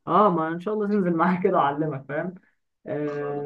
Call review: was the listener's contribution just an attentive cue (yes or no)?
yes